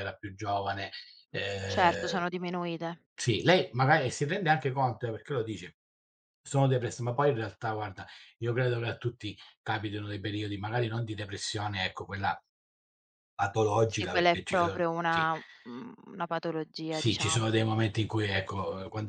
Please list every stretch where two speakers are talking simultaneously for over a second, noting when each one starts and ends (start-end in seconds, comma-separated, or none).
13.8-15.3